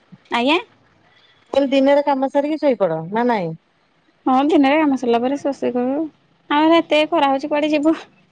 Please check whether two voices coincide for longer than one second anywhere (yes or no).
no